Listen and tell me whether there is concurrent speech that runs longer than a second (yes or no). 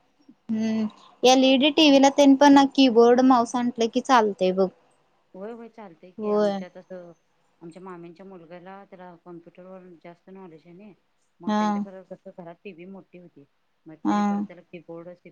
no